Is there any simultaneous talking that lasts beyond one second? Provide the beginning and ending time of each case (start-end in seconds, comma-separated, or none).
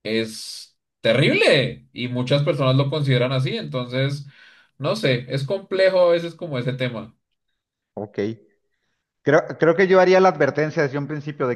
none